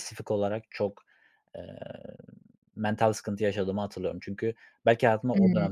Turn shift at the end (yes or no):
no